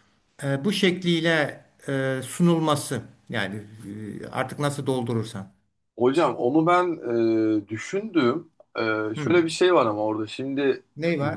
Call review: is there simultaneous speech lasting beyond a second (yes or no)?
no